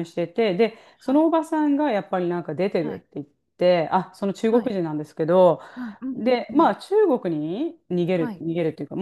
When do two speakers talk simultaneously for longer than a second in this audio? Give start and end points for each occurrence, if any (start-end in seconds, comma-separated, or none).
none